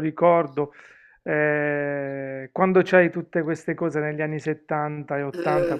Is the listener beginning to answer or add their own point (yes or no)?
no